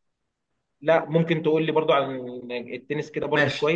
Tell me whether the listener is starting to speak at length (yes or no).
yes